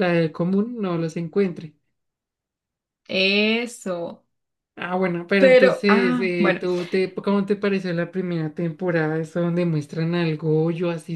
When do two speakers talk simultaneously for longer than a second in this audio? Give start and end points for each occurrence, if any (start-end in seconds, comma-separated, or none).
5.4-6.6